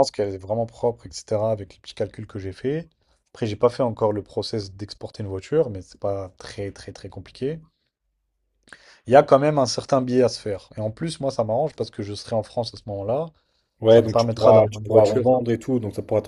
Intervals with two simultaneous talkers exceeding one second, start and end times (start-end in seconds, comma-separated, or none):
13.9-15.2